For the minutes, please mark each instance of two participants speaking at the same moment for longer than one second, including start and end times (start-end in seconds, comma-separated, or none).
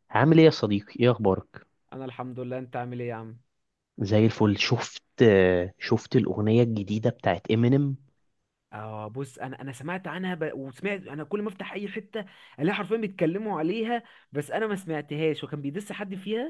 none